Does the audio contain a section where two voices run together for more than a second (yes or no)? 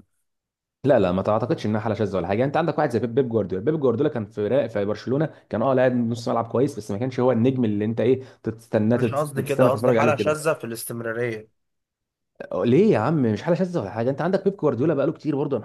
yes